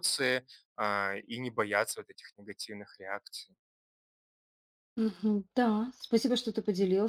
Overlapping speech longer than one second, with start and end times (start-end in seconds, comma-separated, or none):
none